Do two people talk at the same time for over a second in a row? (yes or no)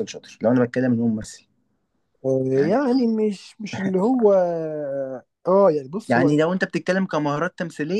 no